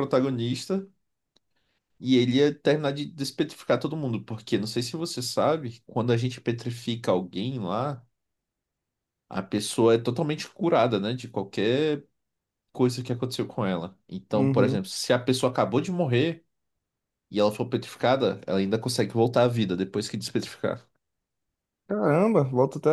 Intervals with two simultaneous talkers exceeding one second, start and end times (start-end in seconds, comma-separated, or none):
none